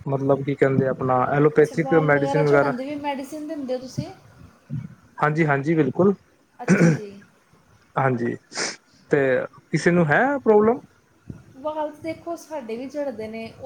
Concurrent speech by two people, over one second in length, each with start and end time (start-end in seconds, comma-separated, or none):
none